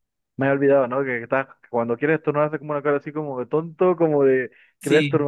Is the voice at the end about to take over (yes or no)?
no